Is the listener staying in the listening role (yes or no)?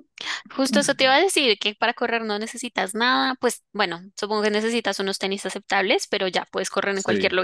yes